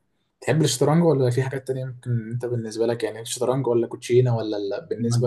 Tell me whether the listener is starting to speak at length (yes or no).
yes